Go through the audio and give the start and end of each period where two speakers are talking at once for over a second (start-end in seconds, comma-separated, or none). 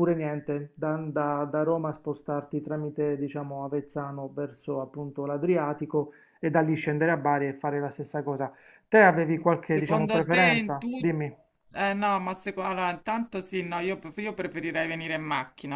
9.7-11.1